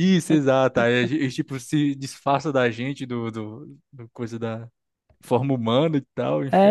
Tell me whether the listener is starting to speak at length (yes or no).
yes